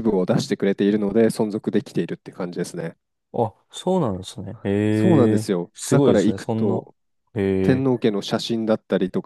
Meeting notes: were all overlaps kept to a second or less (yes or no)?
no